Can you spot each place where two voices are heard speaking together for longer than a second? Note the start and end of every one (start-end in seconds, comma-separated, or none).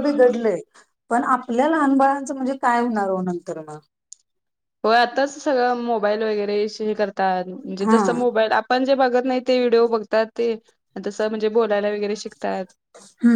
none